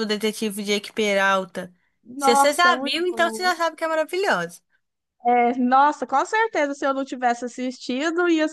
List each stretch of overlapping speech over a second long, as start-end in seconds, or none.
2.1-3.5